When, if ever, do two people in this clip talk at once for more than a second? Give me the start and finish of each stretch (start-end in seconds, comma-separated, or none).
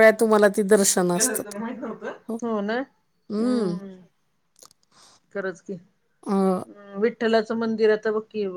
none